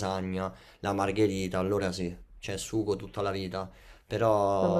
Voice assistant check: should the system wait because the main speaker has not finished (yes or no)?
yes